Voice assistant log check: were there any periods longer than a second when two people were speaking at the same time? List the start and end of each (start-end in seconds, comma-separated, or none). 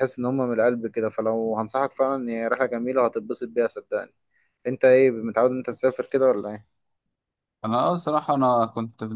none